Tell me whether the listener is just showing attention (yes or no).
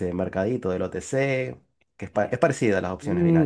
no